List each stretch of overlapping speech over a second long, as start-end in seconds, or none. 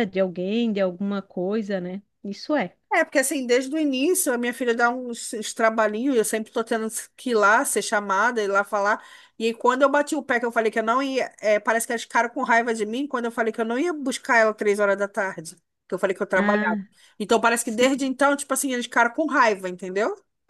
none